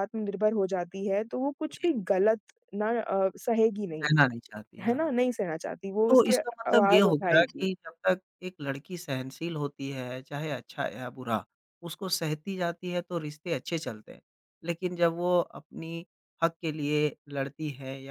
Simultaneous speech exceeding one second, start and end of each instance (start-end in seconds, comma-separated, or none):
6.1-7.7